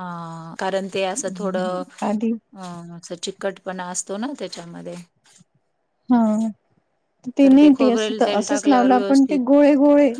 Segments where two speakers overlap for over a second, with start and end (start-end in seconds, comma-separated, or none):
7.4-9.4